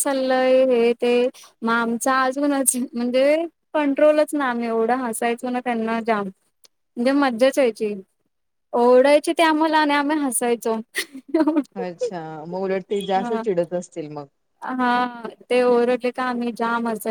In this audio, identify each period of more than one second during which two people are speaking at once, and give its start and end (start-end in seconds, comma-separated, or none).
none